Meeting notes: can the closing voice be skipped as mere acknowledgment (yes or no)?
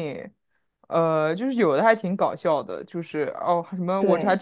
yes